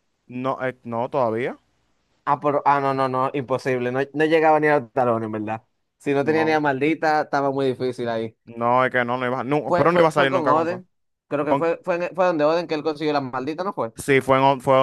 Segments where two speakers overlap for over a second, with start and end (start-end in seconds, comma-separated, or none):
9.7-10.8